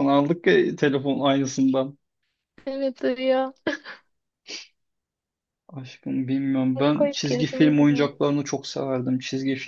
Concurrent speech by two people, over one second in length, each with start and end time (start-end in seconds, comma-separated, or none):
7.0-8.2